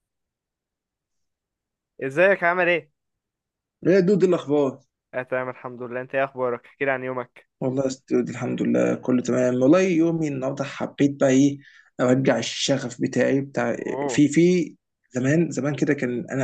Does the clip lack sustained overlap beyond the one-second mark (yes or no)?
yes